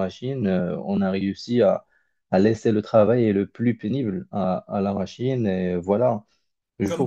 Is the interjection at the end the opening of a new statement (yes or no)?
yes